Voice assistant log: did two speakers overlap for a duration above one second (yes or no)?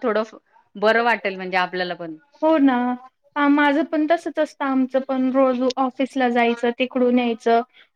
no